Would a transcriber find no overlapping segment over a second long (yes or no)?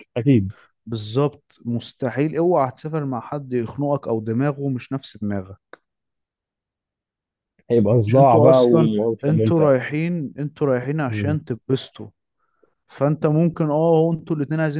no